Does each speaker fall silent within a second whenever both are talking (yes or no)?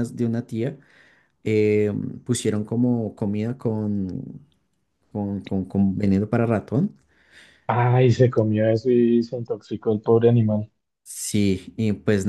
yes